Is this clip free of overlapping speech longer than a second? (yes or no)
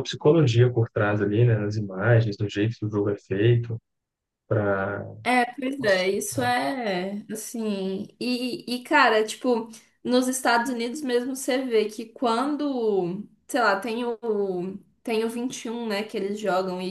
yes